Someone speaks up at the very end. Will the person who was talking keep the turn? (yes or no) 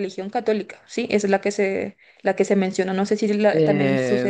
no